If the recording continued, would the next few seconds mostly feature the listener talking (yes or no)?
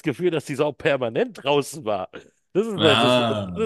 no